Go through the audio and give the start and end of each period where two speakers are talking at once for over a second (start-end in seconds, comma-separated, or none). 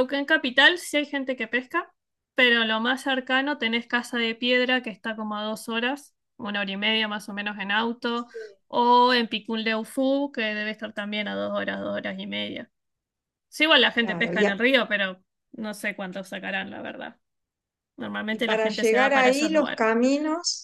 18.3-19.9